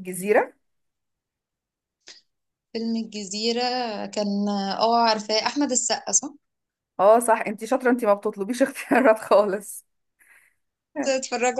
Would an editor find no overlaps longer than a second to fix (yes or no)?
yes